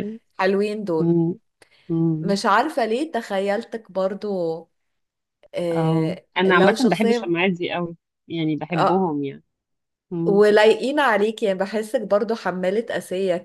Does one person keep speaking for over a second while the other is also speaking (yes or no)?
yes